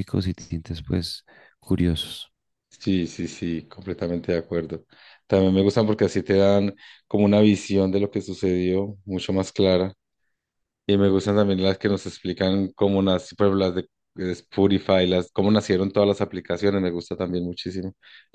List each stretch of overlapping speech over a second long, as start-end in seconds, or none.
none